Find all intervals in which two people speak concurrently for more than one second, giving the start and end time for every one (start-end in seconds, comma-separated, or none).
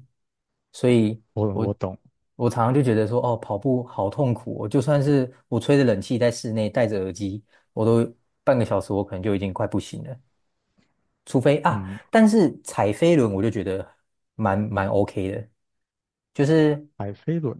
none